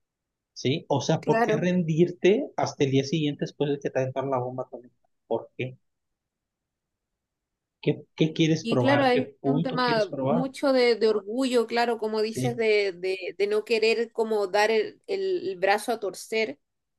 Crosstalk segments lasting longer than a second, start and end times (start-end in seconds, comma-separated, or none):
8.6-10.4